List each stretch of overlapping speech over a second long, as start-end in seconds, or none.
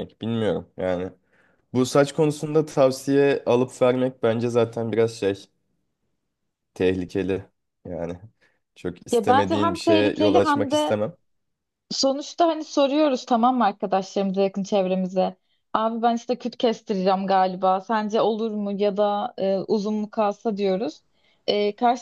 9.1-11.0